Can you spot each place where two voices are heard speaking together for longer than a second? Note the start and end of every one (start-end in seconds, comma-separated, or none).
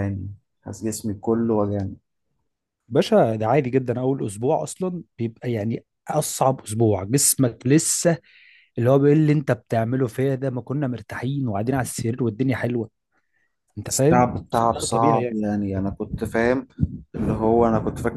14.0-15.5